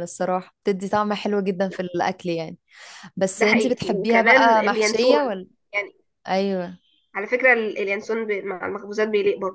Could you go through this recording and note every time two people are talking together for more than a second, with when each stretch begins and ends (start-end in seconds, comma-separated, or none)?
3.4-5.5